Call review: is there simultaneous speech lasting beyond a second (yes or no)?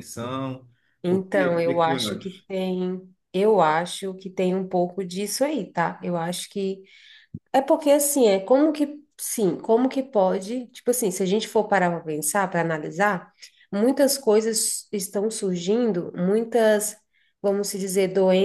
yes